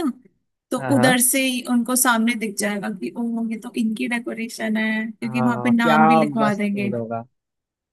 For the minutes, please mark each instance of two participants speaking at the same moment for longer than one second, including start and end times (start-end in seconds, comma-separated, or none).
5.2-6.9